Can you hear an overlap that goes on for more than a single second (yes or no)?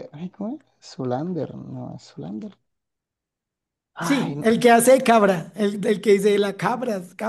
no